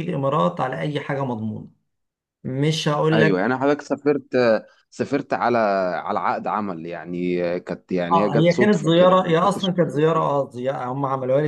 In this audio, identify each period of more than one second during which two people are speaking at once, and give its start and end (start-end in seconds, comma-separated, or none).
8.1-10.2